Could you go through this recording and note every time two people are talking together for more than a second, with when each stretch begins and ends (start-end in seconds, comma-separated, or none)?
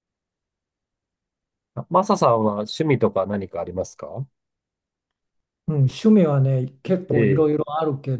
none